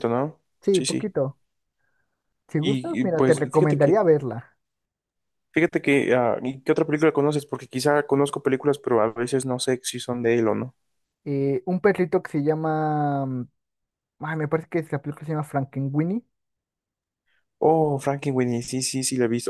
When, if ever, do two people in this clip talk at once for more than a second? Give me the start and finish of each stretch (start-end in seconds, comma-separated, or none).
2.6-4.0